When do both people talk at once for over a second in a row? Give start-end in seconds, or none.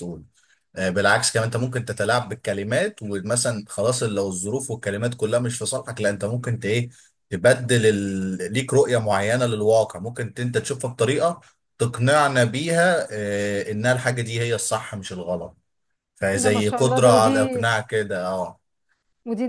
16.3-17.6